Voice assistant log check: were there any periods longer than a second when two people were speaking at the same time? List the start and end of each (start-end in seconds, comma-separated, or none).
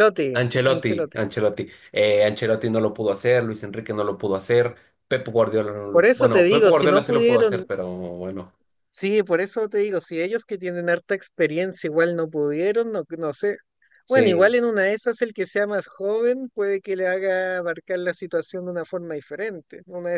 5.9-7.7